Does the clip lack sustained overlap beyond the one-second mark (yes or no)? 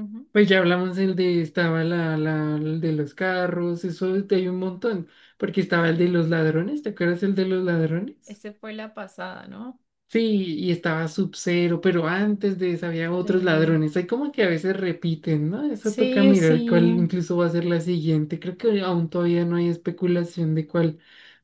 no